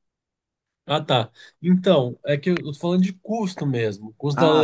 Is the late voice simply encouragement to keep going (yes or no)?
yes